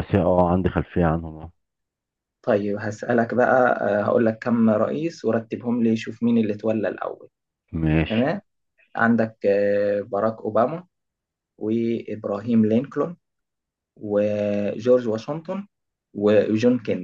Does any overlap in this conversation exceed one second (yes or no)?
no